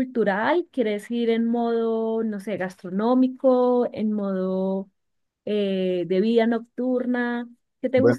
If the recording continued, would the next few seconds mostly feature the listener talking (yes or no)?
yes